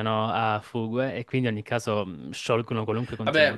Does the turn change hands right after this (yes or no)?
yes